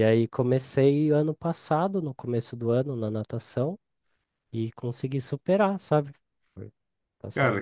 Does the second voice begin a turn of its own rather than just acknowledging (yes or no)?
yes